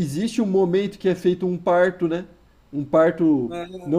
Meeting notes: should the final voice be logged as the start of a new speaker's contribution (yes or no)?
yes